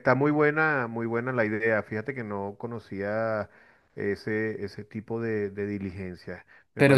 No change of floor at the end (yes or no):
no